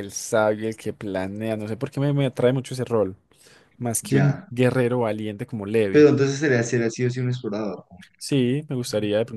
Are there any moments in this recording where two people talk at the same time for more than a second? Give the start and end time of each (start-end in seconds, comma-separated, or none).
none